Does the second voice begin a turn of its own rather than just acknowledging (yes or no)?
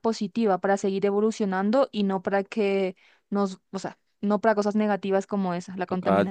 yes